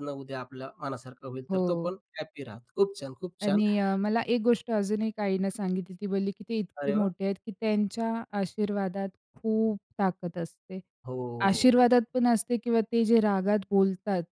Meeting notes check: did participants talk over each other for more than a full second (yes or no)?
no